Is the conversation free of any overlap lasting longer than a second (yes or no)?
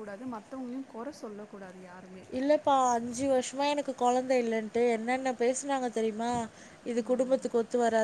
yes